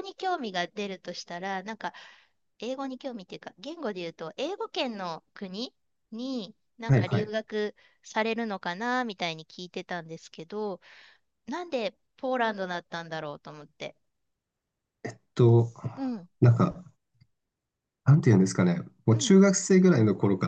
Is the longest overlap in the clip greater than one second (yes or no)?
no